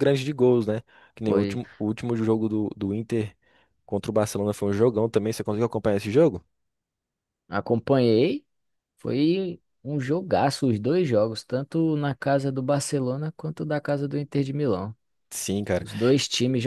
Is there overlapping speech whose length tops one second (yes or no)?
no